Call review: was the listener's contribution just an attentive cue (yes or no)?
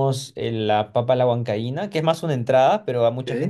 yes